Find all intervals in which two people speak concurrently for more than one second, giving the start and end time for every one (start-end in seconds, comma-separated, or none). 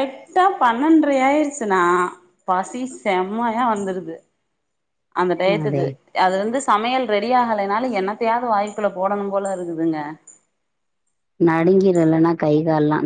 none